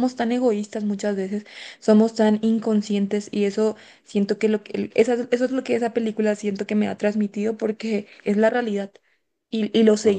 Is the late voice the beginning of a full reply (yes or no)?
yes